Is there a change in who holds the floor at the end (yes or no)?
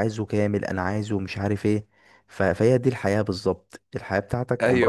yes